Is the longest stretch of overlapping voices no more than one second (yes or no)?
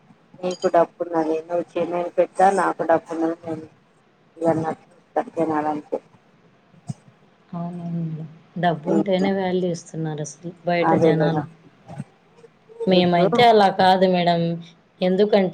yes